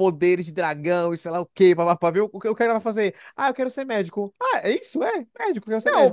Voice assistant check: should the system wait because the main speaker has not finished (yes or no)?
no